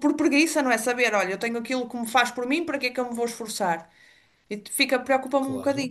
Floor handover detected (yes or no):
yes